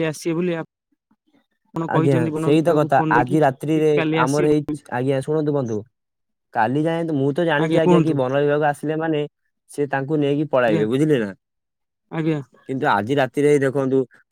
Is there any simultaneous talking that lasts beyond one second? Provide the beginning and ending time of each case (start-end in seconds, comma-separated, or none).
2.0-4.5